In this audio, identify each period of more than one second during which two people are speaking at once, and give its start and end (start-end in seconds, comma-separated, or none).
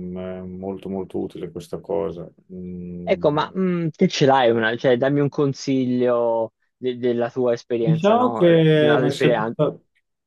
7.8-9.6